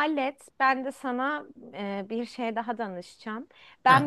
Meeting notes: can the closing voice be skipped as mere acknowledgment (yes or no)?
yes